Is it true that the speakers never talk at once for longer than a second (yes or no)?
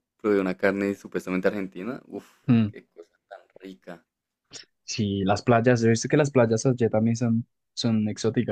yes